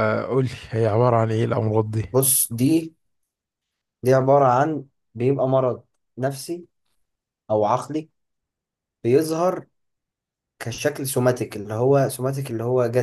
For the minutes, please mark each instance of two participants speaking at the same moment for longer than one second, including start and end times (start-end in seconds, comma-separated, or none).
none